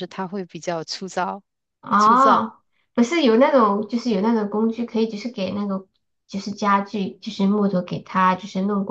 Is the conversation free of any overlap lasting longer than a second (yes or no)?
yes